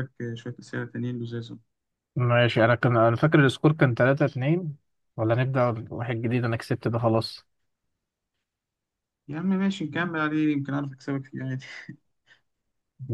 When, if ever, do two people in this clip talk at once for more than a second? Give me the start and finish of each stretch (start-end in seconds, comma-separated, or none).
none